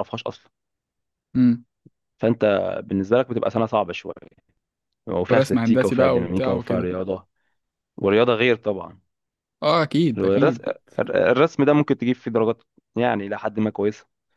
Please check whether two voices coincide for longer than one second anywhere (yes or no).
yes